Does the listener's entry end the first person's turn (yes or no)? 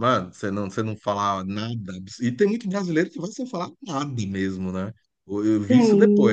no